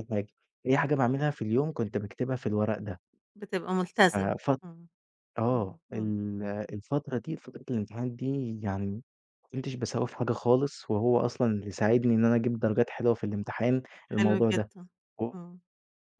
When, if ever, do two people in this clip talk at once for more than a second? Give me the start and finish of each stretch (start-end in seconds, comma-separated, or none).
none